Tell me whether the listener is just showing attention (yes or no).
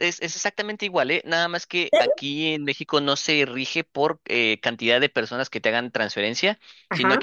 yes